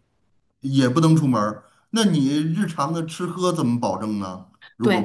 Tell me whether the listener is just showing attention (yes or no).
no